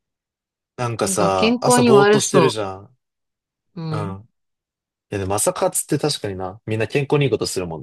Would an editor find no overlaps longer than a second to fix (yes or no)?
no